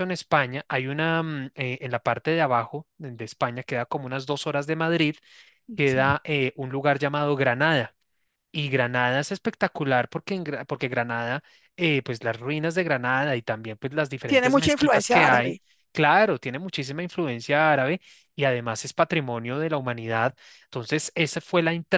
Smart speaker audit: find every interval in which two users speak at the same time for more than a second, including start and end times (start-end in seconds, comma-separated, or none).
14.2-15.6